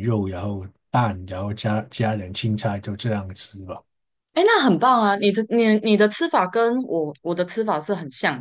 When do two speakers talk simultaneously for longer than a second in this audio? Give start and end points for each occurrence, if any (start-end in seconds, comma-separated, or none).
none